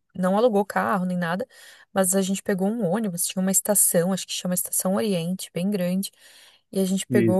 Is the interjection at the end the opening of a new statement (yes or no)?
no